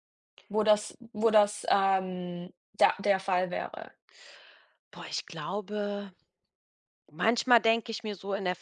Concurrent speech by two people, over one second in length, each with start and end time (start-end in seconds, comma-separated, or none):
none